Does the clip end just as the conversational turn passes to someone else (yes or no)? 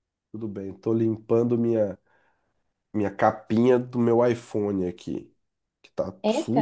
no